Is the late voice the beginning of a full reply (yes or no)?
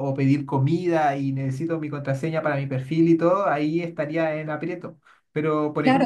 yes